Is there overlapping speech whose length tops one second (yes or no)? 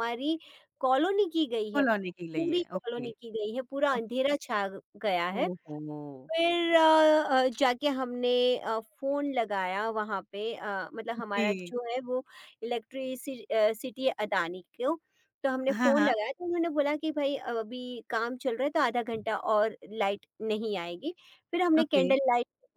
yes